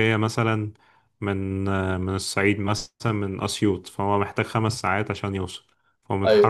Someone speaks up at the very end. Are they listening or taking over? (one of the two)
listening